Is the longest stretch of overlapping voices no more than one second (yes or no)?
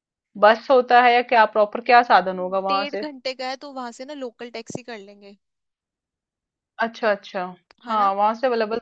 yes